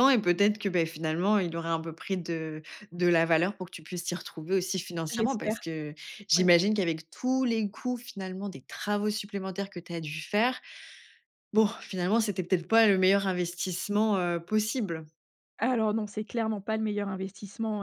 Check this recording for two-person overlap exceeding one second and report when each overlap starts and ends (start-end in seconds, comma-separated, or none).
none